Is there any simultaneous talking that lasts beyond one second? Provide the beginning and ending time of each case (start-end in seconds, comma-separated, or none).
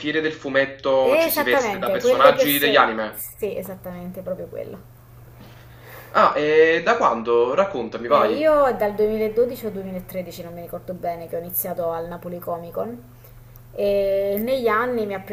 1.0-3.2